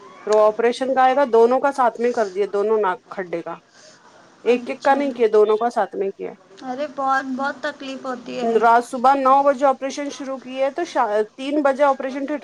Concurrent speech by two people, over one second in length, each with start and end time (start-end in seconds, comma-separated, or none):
none